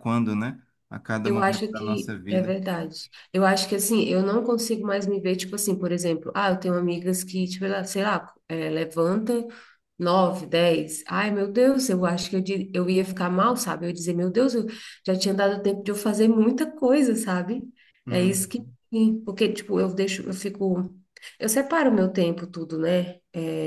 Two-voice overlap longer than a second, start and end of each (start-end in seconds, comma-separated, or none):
1.2-2.5